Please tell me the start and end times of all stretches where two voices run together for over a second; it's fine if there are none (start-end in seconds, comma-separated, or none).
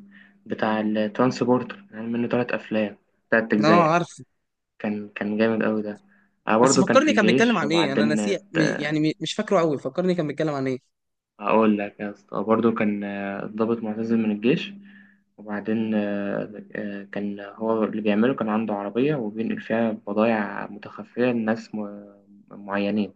6.6-8.2